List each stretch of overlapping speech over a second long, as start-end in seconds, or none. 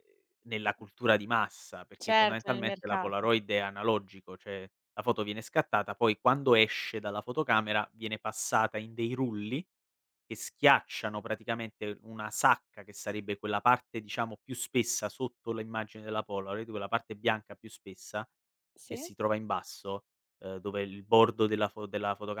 2.0-3.3